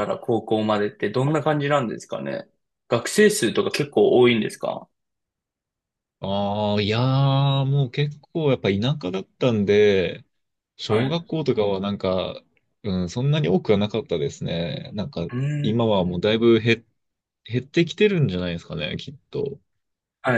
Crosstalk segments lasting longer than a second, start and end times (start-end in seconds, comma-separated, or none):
none